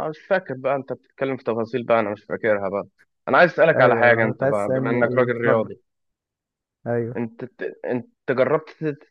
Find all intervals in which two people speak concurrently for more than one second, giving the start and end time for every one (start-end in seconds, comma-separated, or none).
3.7-5.7